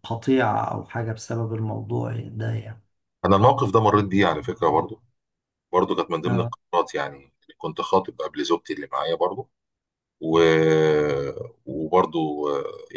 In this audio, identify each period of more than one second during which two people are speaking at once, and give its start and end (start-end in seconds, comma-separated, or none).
none